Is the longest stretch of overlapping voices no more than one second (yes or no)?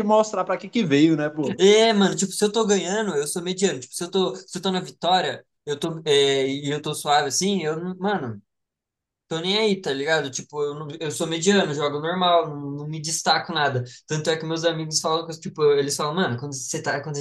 yes